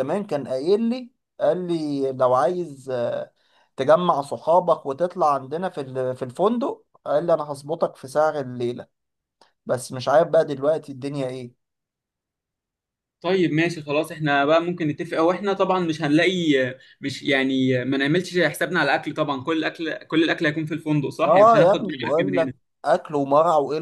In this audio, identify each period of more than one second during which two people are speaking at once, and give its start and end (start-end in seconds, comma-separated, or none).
21.2-22.5